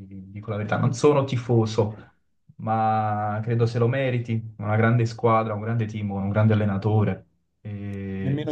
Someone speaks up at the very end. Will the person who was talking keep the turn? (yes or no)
no